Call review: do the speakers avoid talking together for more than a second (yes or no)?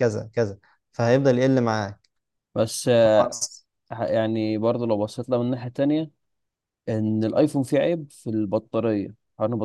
yes